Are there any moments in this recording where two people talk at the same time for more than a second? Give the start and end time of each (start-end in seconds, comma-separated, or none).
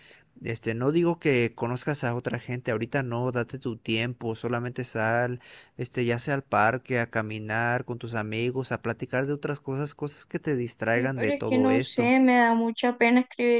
10.9-12.1